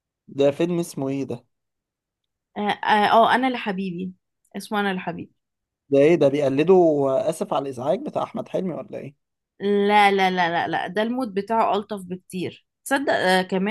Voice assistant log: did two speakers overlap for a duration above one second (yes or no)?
no